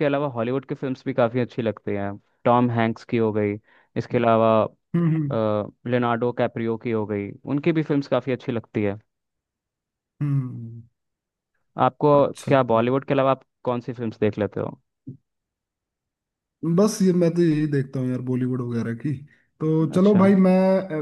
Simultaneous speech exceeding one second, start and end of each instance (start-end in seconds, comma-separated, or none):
none